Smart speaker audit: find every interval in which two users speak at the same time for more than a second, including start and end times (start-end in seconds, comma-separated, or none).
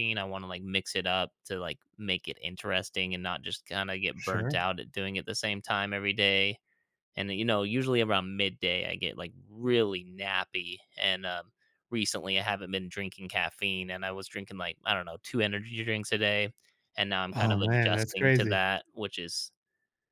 17.3-18.6